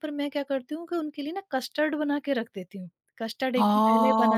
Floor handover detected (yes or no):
yes